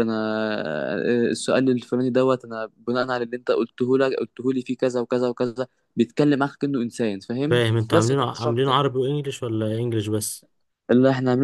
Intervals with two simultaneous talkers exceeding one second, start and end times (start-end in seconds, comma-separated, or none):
7.5-8.8